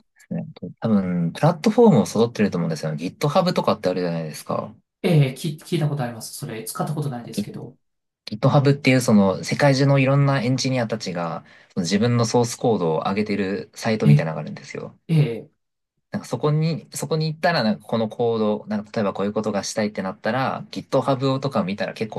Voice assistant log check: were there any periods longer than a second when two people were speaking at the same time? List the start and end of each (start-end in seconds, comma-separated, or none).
none